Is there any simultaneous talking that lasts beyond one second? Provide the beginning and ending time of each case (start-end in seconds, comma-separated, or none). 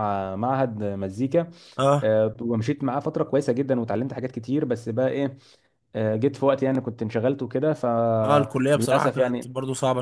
8.2-9.5